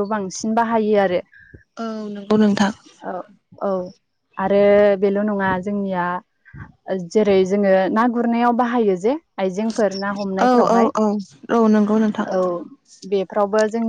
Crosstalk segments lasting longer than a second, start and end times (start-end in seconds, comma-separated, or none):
none